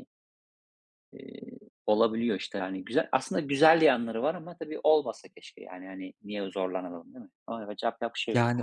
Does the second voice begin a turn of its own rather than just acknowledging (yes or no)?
yes